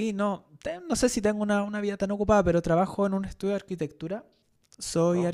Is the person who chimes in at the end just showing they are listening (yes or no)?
yes